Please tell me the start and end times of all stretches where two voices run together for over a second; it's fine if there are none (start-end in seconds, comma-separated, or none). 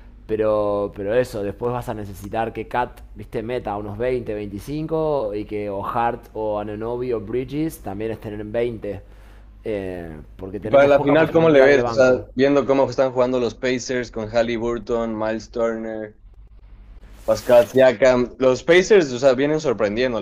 10.6-12.3